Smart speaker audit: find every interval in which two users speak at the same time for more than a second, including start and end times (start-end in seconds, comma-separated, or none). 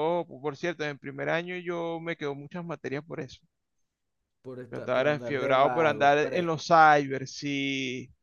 4.7-6.4